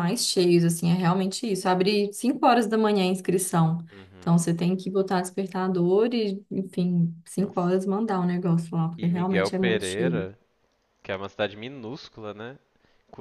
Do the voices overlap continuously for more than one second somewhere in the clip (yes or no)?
yes